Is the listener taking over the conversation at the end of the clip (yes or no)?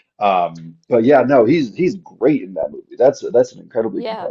yes